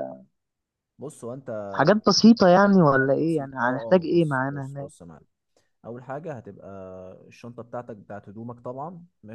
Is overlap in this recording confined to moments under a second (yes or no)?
no